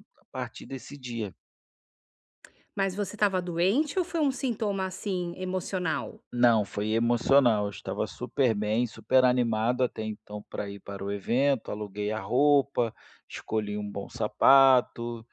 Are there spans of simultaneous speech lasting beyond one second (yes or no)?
no